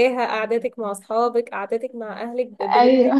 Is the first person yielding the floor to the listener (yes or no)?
no